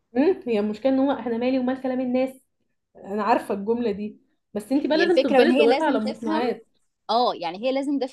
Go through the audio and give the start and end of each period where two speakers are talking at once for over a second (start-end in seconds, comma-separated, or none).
4.9-6.4